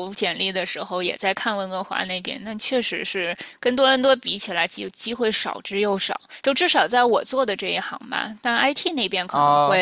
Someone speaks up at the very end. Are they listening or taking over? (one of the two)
listening